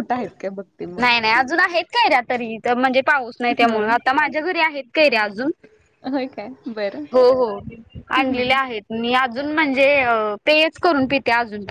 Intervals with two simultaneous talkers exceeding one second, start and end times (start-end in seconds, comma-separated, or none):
none